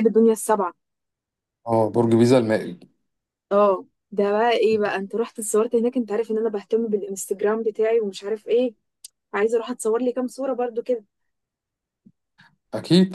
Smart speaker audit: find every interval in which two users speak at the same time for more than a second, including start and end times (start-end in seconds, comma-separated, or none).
none